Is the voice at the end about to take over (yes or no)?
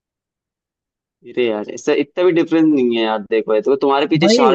no